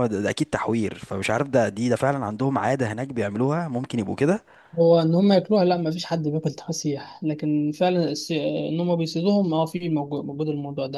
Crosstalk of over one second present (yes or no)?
no